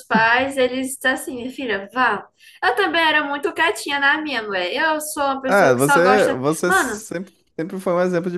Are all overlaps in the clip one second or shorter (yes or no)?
no